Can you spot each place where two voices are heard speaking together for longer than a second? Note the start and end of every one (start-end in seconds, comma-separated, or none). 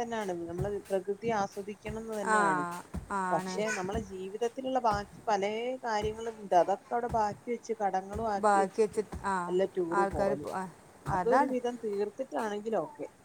none